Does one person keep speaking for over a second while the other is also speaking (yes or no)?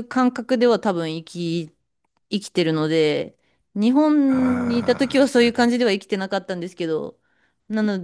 yes